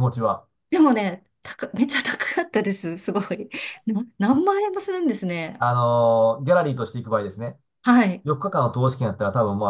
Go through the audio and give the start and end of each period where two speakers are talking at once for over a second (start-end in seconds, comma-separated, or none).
none